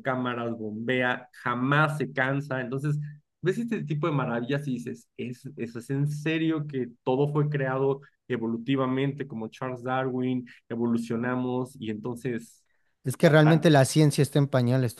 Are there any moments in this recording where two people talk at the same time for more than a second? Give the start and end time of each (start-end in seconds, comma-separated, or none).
none